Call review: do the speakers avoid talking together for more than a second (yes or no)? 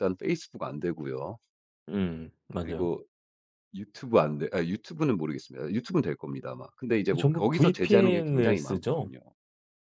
no